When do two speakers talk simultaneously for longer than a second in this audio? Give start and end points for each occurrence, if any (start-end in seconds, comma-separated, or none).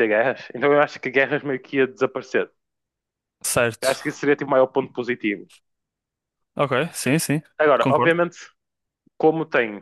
none